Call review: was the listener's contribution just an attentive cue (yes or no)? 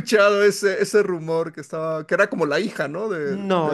no